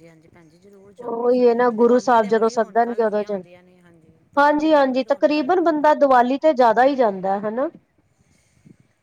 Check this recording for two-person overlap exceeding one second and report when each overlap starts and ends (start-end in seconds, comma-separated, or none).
1.0-3.4, 4.4-5.8